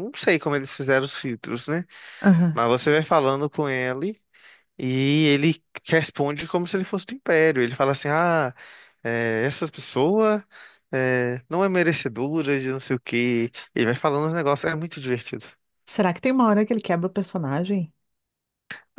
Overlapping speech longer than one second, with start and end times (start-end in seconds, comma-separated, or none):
none